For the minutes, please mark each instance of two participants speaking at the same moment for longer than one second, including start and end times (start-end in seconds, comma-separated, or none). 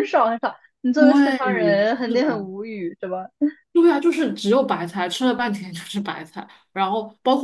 0.9-2.5